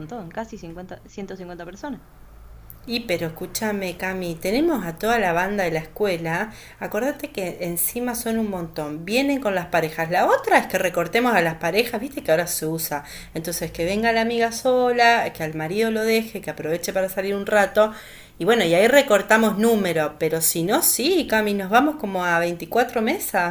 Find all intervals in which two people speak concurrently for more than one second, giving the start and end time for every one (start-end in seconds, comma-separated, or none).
none